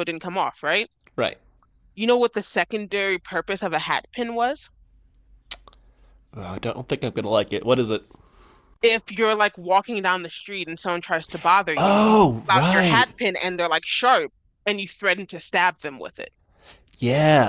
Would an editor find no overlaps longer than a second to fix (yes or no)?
no